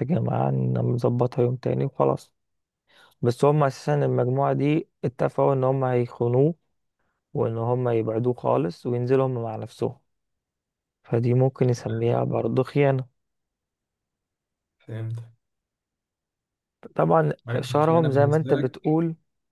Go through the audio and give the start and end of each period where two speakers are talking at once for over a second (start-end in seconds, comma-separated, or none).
17.5-18.8